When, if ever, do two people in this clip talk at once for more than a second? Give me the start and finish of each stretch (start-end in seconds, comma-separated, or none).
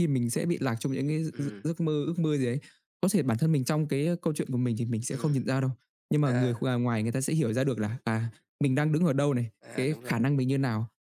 none